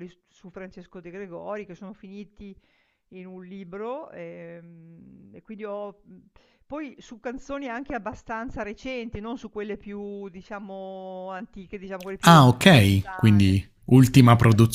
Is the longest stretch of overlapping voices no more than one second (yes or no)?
no